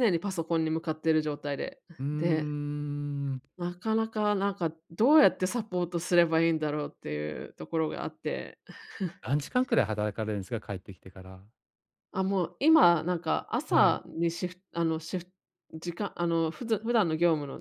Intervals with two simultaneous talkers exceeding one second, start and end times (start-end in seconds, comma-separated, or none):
none